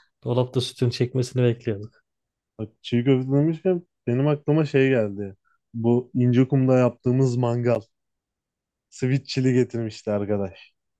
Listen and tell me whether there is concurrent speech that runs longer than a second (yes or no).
no